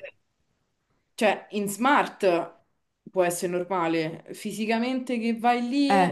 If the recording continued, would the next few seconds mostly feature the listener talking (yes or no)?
no